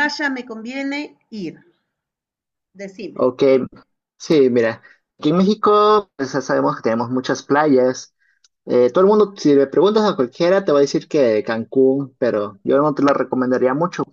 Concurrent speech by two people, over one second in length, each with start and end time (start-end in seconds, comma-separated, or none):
none